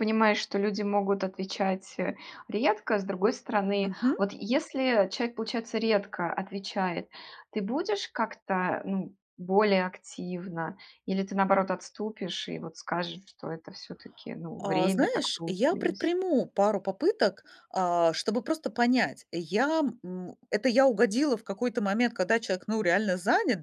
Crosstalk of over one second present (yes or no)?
yes